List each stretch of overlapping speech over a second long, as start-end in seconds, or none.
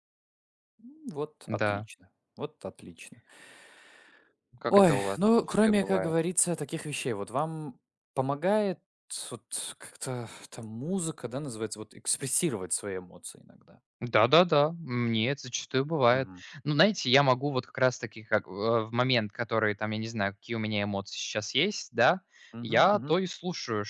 4.7-6.1